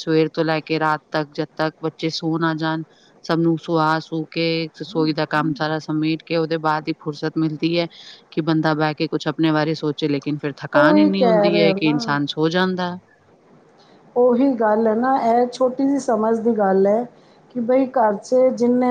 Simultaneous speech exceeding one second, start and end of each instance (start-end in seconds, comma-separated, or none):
10.7-12.2